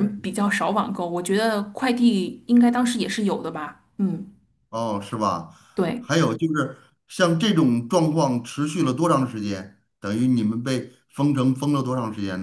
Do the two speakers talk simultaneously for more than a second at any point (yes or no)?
no